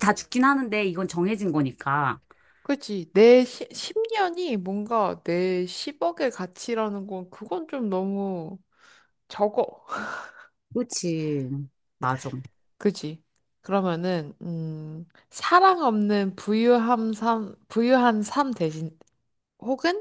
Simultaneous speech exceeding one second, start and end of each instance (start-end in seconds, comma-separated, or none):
none